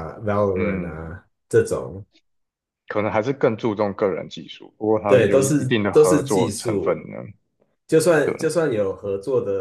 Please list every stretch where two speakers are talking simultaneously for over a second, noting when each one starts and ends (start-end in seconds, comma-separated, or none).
5.0-7.0